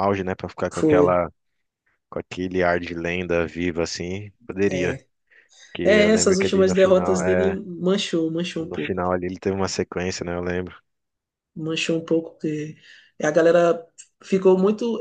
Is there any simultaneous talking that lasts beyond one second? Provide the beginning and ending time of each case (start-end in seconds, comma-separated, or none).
5.8-7.6